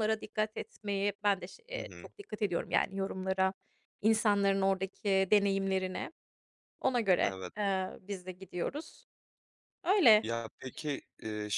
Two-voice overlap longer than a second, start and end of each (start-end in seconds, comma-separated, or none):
none